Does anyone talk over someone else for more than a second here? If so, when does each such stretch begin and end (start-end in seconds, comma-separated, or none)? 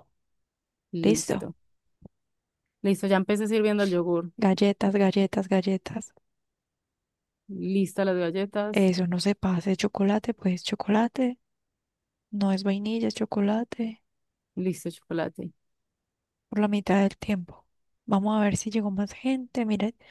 none